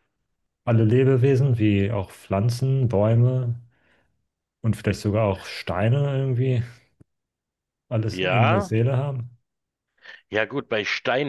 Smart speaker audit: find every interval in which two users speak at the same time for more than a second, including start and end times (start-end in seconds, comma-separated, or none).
none